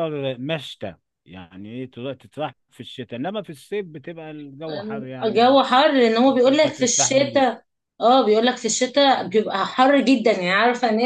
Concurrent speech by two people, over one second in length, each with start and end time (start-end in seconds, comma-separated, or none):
6.2-7.6